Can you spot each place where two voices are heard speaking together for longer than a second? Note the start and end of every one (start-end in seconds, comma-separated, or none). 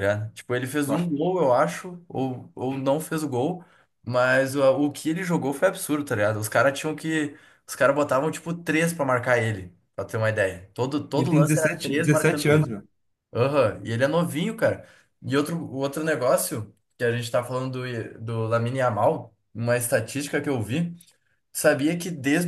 11.2-12.7